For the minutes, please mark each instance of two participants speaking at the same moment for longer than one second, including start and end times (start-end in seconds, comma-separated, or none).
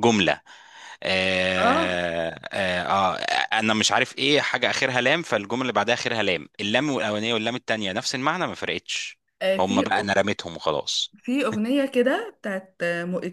none